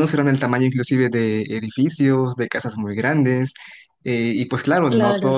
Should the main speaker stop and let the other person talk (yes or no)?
no